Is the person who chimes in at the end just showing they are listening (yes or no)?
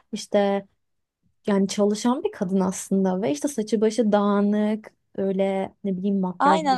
no